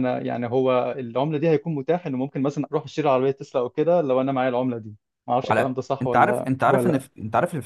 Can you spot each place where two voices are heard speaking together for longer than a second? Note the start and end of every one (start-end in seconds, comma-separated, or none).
5.4-7.0